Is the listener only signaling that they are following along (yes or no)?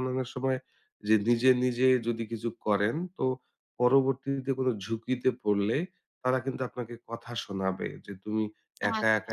yes